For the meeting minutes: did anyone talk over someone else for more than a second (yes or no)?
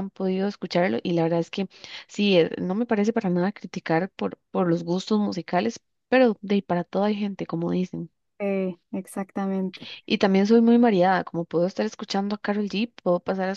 no